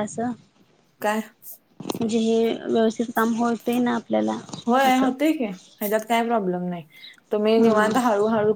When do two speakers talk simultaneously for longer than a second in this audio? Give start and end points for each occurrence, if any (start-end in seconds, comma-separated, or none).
none